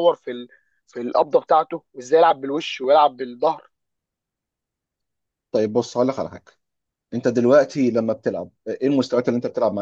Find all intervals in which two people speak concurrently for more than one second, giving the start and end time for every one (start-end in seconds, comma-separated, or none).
none